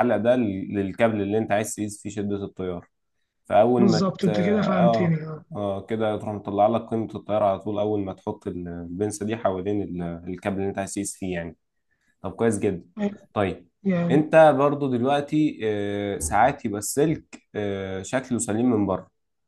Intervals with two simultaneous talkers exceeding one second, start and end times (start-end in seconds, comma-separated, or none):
3.8-5.2